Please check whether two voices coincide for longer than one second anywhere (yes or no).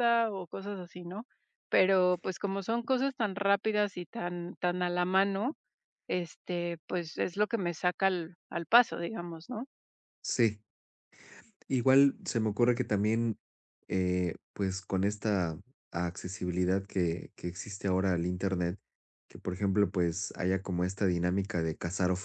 no